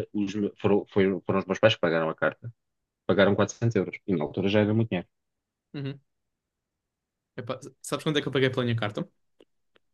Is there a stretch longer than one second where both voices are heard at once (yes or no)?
no